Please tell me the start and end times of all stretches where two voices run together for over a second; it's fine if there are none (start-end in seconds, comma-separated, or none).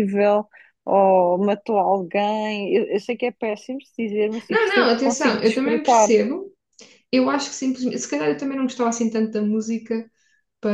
4.5-6.1